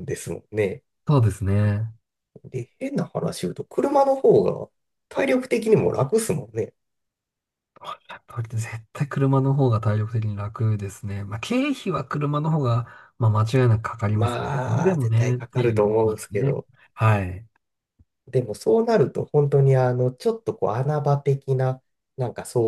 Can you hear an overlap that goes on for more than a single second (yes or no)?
yes